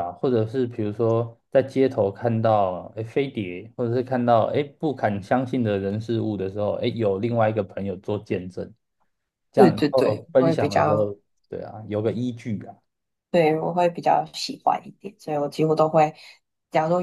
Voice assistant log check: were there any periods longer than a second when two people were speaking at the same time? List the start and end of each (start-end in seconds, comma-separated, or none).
9.5-11.1